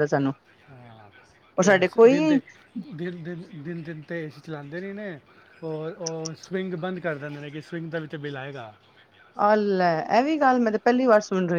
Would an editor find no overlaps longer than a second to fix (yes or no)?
yes